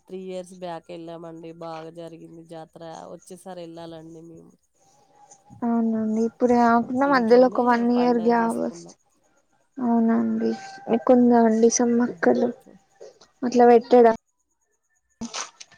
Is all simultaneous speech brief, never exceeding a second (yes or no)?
no